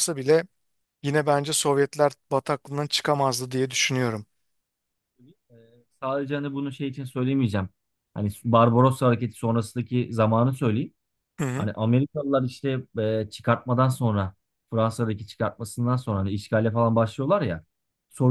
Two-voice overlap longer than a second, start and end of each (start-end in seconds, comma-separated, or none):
none